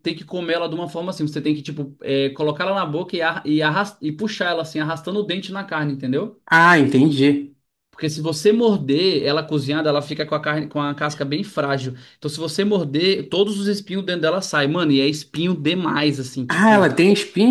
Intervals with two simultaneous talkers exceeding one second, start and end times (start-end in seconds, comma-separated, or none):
none